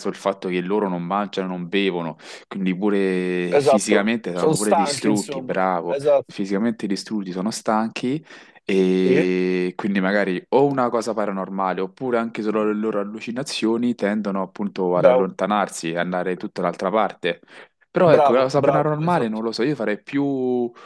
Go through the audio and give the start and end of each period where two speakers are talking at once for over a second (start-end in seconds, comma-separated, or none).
3.5-6.4, 18.0-19.4